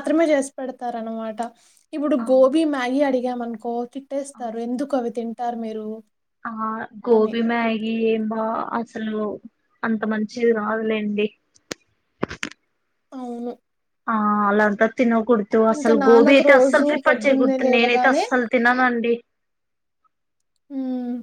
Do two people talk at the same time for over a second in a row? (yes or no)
yes